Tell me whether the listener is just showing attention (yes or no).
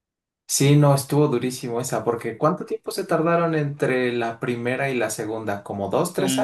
no